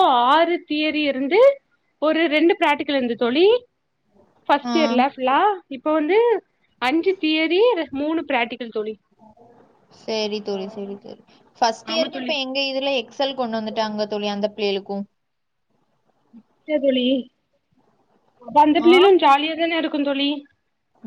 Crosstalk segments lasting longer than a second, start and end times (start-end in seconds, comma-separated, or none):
none